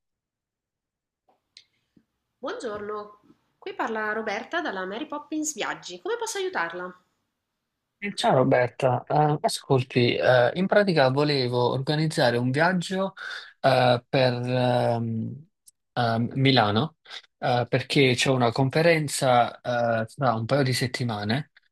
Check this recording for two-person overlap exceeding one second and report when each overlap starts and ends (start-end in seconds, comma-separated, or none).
none